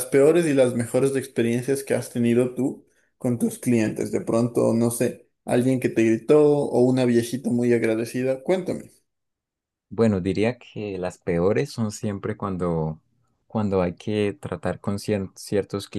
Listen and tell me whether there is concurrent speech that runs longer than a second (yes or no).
no